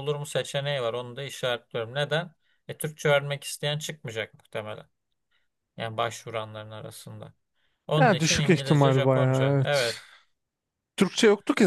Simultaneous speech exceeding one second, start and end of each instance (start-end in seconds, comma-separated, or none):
8.0-9.9